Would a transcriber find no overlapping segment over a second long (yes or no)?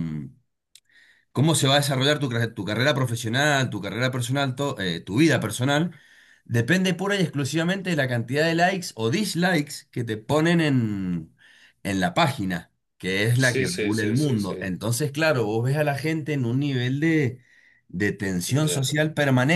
no